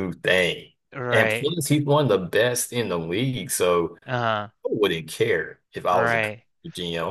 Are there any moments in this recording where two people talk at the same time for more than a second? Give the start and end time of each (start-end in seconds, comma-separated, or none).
none